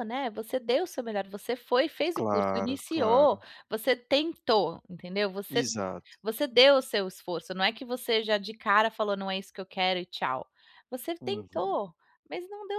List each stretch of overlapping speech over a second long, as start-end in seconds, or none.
2.2-3.4